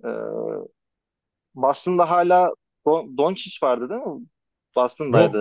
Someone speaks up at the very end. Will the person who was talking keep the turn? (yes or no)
no